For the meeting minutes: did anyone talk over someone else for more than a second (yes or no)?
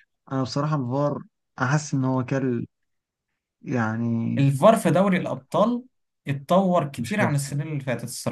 no